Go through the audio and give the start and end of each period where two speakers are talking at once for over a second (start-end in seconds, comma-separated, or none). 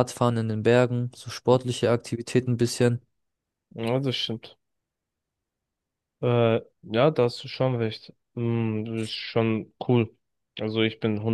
none